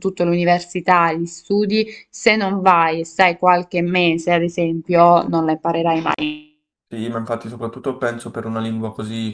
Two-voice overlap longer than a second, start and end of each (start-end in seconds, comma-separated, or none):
none